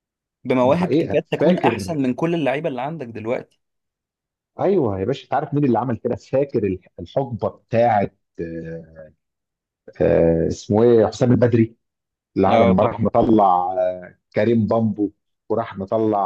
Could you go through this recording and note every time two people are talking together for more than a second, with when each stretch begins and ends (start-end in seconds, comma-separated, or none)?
0.6-1.8